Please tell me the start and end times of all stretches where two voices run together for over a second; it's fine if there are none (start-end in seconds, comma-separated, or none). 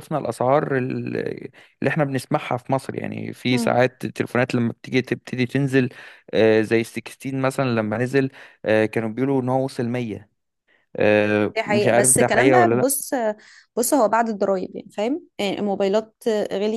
11.6-12.9